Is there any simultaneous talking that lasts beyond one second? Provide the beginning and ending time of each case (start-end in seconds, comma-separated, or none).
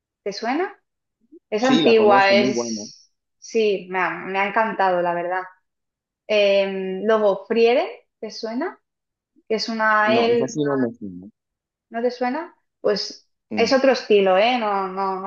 1.6-2.8